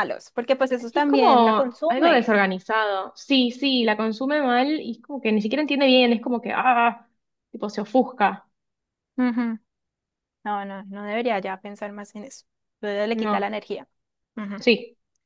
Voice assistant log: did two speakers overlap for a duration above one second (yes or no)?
yes